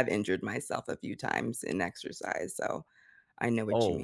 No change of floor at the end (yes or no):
no